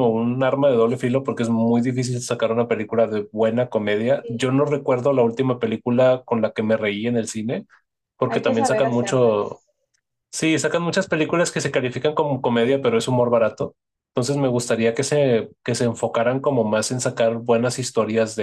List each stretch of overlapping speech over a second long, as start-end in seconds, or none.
8.2-9.6